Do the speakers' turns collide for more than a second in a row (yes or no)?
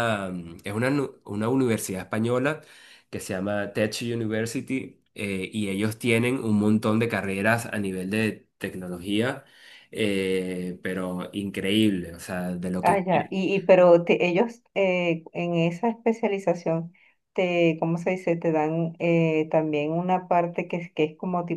no